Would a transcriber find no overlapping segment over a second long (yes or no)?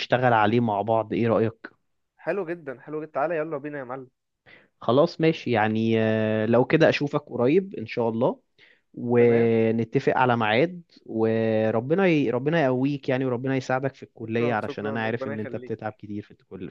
no